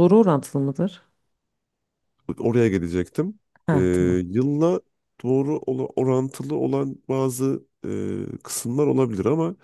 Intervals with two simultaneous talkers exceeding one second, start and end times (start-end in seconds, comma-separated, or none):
none